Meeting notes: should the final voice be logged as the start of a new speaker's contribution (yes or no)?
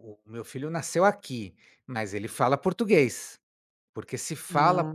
no